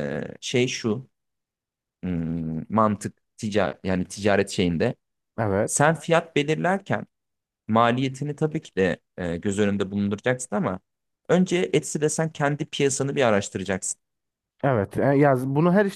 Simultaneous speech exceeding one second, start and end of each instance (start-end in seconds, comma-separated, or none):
none